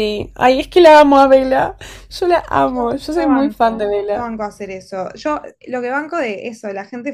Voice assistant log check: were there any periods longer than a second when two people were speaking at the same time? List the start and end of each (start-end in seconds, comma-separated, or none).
2.7-4.2